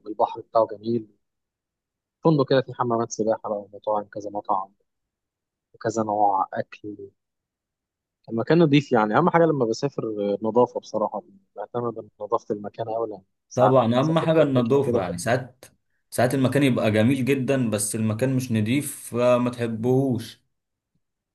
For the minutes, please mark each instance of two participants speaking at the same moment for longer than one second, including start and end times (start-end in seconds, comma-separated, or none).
13.6-15.2